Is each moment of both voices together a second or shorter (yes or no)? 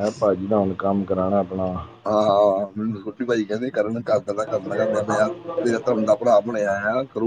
yes